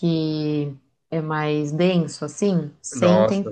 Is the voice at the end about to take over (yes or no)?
yes